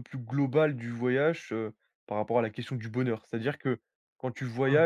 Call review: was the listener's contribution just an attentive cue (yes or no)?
yes